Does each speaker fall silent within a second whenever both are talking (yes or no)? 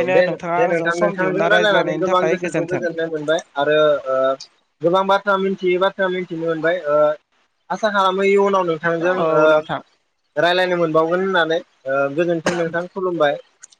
no